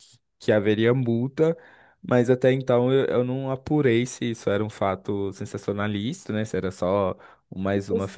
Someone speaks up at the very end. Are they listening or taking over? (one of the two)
listening